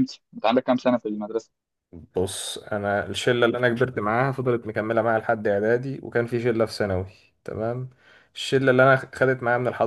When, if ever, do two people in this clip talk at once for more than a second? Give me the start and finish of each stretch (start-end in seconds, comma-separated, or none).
none